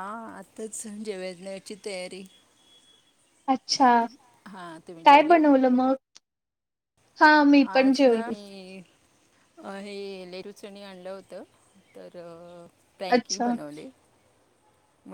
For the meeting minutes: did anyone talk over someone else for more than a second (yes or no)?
no